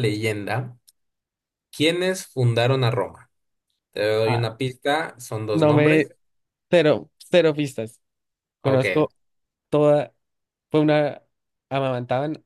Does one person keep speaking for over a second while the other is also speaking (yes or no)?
no